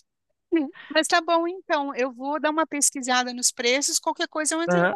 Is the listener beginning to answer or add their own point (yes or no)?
yes